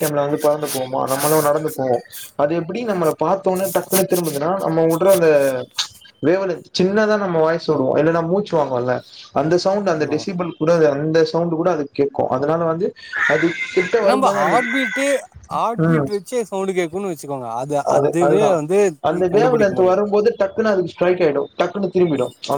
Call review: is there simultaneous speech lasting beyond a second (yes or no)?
no